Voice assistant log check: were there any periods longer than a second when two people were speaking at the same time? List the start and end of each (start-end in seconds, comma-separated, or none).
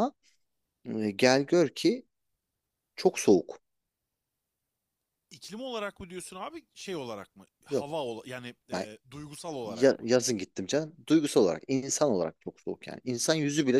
none